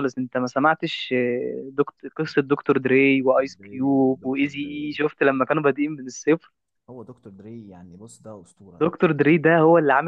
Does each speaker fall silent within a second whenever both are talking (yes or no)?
no